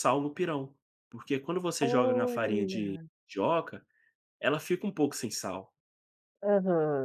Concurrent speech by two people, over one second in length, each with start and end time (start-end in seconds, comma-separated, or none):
1.8-3.0